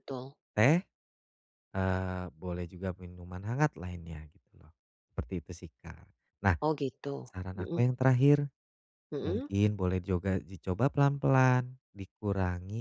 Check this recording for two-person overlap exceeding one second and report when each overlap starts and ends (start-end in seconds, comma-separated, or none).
none